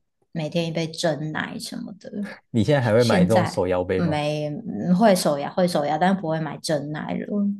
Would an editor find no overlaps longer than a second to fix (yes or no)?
no